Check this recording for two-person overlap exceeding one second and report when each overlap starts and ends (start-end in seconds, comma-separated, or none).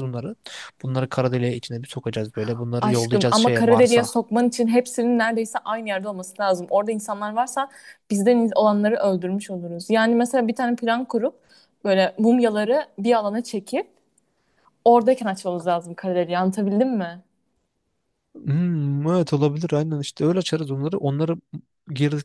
2.8-4.2